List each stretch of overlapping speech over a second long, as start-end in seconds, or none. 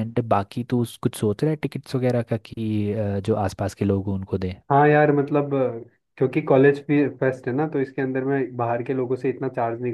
none